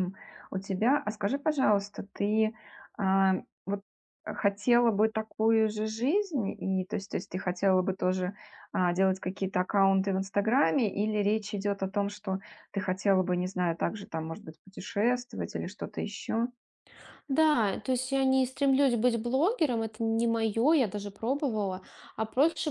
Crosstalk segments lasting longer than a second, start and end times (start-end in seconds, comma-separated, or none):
none